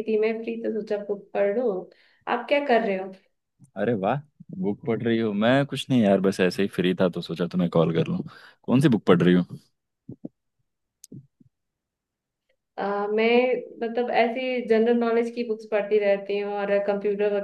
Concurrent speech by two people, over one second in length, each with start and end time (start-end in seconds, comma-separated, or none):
none